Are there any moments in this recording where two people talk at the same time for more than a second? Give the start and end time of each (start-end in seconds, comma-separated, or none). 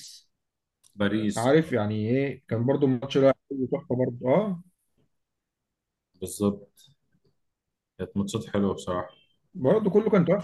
none